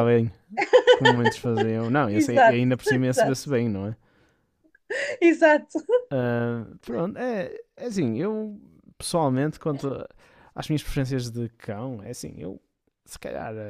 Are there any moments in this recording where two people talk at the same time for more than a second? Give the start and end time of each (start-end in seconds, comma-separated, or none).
2.1-3.4